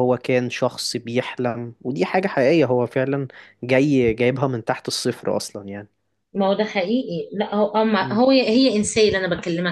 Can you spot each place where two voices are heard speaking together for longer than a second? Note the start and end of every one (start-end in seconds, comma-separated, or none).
none